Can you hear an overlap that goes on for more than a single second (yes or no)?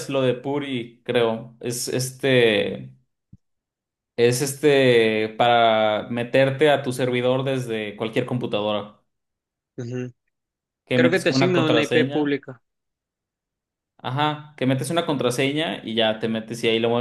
yes